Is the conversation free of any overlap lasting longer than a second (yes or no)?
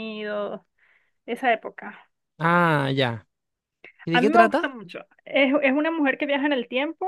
yes